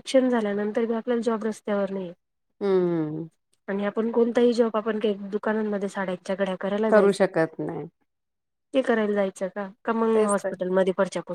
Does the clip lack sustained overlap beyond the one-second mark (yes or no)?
yes